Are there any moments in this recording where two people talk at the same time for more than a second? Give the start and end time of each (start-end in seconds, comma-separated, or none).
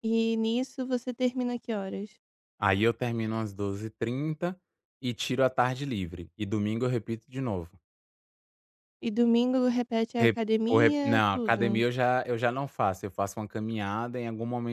10.2-11.8